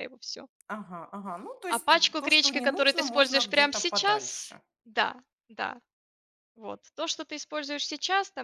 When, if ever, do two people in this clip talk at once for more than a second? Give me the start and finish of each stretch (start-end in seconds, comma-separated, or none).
1.7-4.6